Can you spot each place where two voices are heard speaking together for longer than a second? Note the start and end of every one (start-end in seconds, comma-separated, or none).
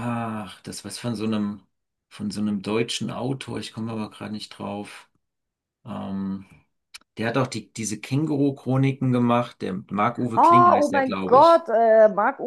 10.3-11.7